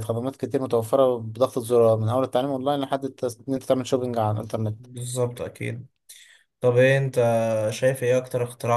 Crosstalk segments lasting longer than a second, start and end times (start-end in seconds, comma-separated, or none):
none